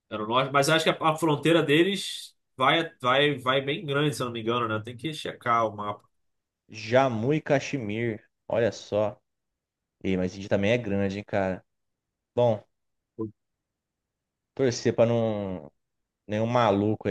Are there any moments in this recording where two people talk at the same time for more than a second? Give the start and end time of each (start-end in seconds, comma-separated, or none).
none